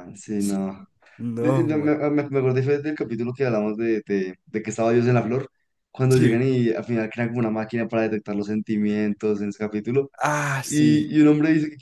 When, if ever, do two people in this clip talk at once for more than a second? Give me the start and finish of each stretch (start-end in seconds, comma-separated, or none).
none